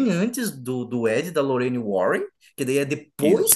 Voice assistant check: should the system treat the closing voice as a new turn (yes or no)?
no